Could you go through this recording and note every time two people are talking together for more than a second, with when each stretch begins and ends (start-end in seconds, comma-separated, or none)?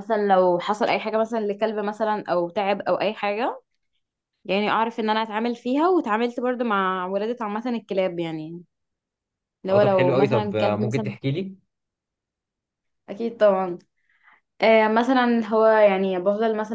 9.7-11.1